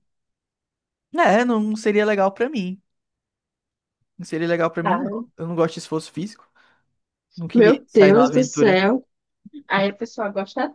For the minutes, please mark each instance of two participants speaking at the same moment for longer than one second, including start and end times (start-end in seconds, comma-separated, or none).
7.5-8.8